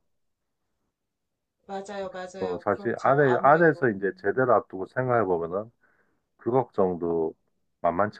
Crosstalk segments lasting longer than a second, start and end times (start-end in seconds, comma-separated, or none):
2.4-4.4